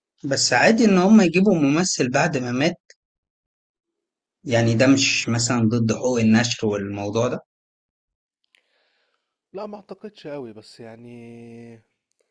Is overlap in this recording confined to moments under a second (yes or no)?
yes